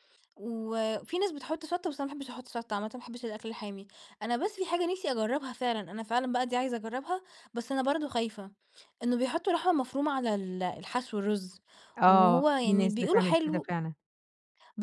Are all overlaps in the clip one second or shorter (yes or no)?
no